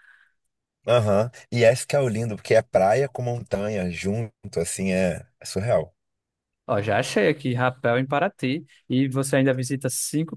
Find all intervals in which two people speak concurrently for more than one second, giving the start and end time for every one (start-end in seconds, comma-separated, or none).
none